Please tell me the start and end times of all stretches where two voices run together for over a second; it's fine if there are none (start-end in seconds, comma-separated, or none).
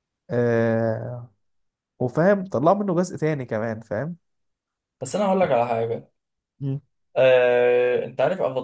none